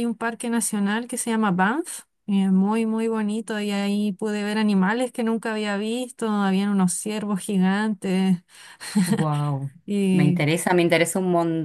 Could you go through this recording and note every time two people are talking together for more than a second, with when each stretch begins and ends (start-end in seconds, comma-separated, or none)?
none